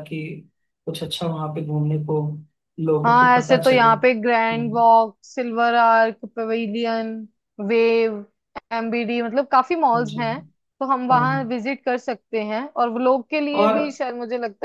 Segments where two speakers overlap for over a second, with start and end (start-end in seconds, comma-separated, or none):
3.0-4.8